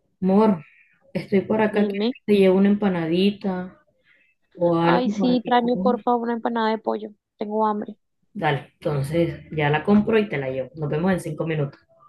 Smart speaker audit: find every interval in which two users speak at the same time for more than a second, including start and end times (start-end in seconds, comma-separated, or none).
4.8-6.0